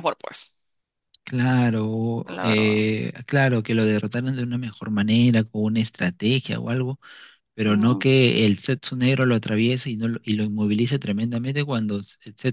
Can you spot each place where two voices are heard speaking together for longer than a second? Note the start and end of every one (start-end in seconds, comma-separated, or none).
none